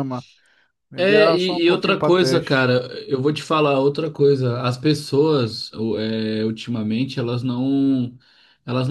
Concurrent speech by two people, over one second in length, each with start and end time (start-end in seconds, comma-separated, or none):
1.0-2.7